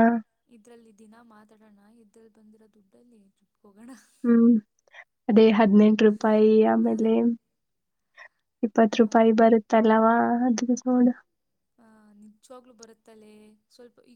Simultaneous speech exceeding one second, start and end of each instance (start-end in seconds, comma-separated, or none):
none